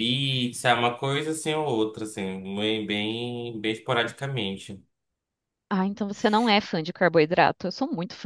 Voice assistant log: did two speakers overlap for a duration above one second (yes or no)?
no